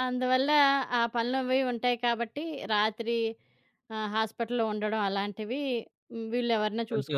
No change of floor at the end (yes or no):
no